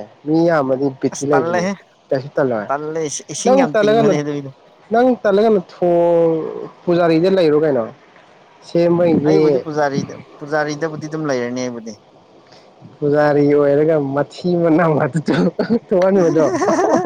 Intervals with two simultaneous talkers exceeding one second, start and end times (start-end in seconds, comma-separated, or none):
2.7-4.0